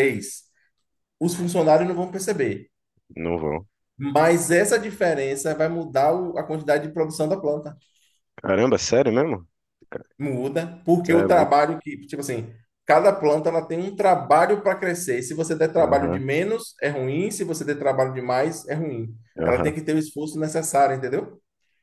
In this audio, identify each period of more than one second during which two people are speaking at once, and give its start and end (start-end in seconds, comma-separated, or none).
none